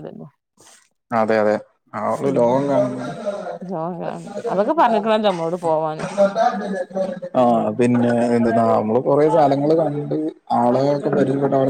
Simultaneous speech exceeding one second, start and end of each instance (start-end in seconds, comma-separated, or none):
none